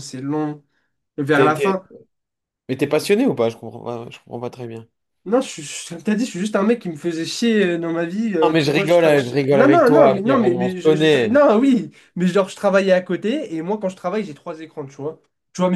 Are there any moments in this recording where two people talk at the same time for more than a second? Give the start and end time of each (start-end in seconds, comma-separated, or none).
8.4-11.4